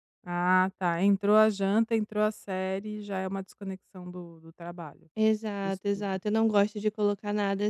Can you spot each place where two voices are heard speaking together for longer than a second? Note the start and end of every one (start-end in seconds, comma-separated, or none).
none